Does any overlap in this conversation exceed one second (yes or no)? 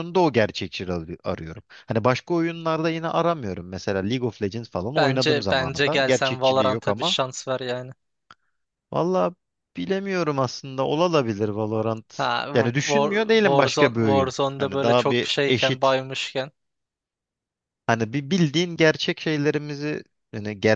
yes